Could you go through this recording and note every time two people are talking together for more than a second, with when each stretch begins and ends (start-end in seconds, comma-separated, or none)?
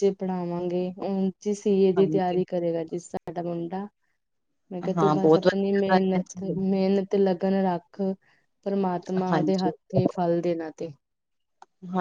5.0-6.8